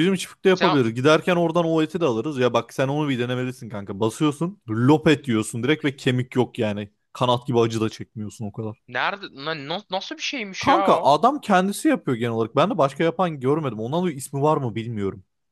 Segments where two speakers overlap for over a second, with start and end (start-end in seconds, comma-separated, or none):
none